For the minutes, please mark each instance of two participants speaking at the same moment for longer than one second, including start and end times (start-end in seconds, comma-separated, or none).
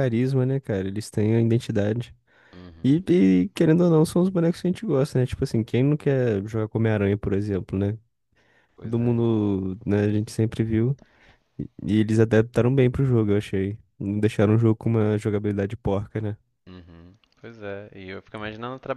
none